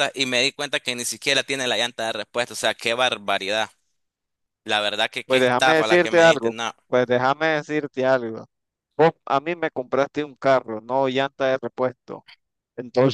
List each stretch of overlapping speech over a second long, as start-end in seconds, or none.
5.2-6.7